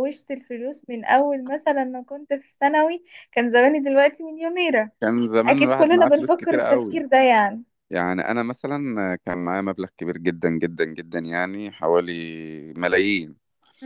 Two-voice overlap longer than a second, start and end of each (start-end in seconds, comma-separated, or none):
5.5-7.0